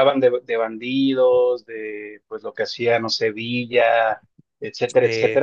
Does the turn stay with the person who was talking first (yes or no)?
yes